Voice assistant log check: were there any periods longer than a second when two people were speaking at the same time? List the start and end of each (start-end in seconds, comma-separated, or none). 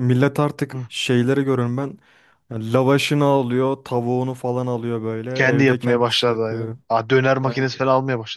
5.3-6.8